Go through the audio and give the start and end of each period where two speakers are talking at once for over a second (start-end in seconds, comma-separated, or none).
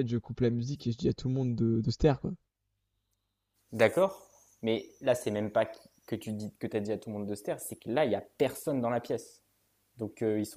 none